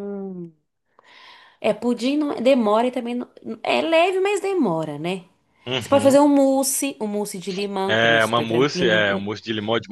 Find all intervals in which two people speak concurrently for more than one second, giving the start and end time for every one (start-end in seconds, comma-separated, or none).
7.9-9.3